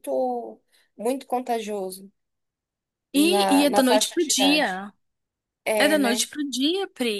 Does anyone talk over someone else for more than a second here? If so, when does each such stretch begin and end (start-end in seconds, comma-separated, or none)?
3.1-4.8